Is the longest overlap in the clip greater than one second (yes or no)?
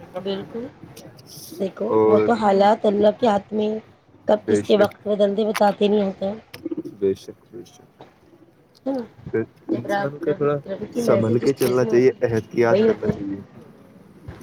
yes